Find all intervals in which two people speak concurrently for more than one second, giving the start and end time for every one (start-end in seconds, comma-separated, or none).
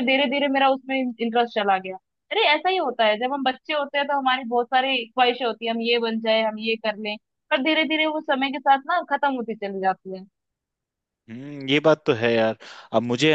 none